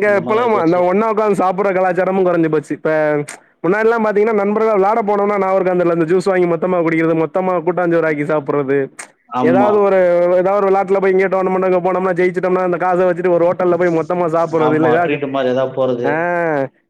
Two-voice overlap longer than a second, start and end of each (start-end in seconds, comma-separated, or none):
none